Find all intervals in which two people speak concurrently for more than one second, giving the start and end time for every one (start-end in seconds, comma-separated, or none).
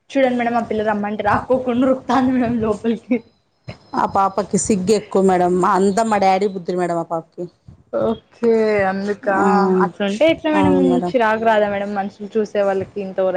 none